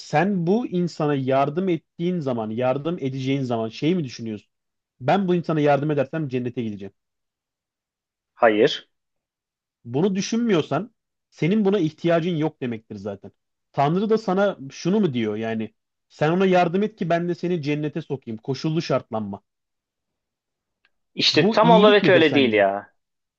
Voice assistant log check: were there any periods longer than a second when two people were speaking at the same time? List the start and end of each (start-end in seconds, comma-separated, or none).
21.3-22.7